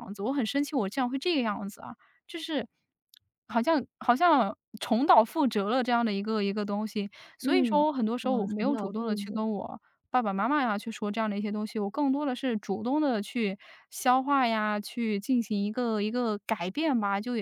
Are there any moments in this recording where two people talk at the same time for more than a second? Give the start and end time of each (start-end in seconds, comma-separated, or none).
7.4-9.4